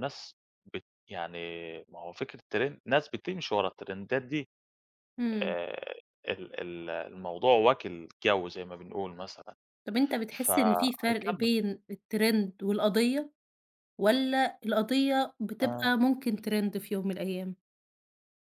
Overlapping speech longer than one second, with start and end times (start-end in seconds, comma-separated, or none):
10.3-11.5